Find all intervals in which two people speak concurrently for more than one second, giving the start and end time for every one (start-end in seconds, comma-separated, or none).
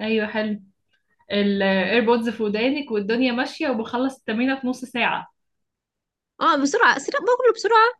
none